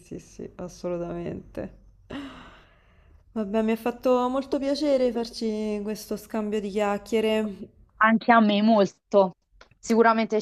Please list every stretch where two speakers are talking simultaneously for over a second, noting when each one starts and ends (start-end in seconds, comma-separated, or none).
none